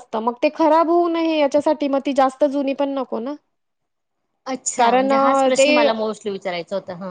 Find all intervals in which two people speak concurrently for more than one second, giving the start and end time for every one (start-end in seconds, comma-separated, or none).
none